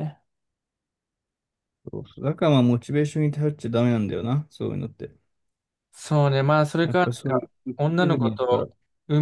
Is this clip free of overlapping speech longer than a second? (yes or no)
no